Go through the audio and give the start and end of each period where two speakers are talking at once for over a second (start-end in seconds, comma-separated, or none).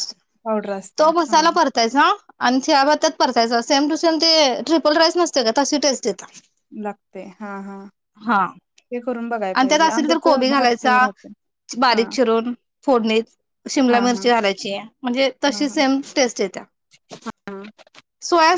9.5-11.1